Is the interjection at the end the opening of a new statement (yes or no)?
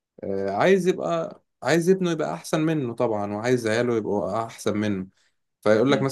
no